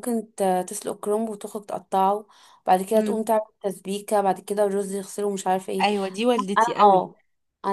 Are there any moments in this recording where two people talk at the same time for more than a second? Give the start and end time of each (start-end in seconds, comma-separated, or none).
none